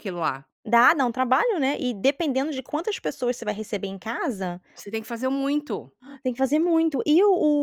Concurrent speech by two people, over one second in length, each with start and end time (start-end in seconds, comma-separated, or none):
none